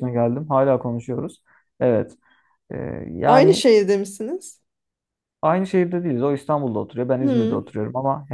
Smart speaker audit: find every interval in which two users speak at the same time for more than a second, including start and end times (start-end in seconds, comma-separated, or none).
none